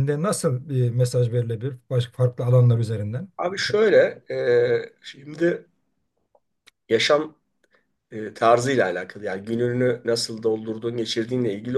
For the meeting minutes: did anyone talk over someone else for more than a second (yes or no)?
no